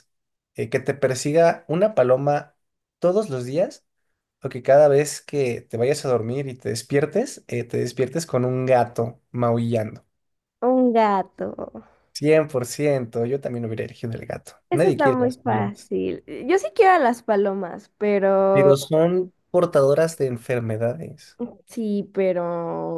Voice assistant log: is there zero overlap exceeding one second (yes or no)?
no